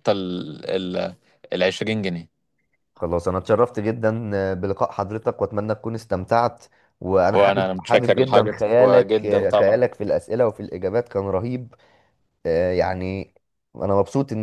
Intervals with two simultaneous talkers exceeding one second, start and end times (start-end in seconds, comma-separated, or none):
7.3-9.8